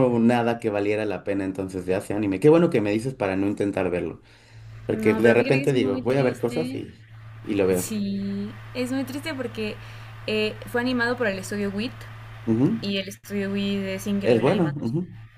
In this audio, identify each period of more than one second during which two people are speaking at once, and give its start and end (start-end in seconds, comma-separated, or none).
4.9-6.9